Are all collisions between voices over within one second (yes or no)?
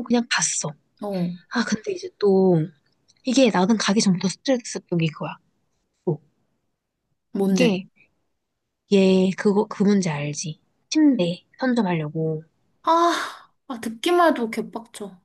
yes